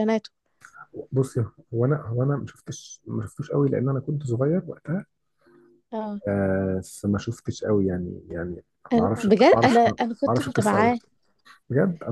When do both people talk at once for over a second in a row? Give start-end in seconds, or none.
8.9-10.9